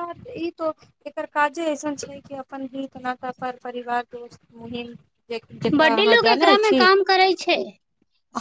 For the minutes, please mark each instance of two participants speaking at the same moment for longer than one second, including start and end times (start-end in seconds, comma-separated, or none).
none